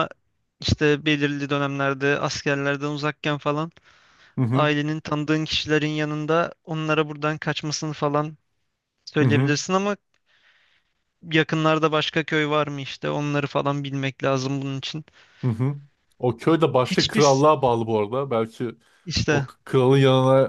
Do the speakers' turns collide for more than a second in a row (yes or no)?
no